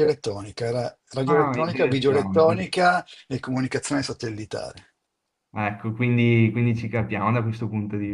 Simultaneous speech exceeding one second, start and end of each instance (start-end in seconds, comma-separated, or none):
1.2-2.7